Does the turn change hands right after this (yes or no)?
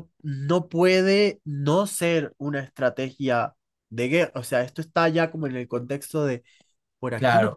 yes